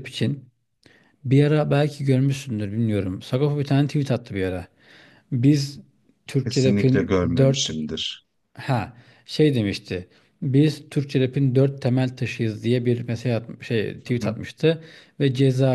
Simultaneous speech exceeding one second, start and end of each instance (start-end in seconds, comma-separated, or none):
6.4-7.7